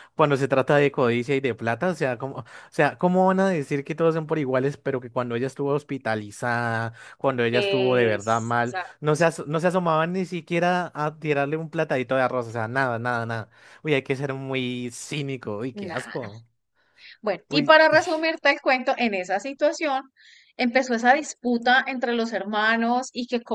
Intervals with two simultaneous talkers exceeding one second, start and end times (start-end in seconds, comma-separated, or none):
7.5-8.9